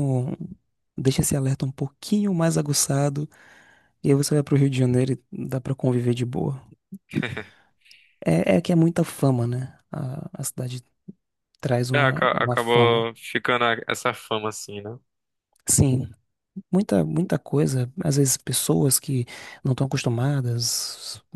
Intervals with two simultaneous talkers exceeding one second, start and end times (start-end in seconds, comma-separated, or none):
11.9-13.1